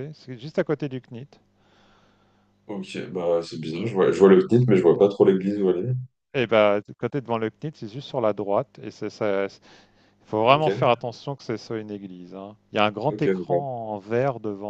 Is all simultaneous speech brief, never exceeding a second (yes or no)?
yes